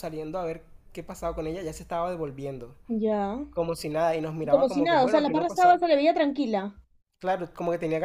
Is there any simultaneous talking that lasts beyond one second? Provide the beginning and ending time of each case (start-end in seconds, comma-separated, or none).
4.4-5.8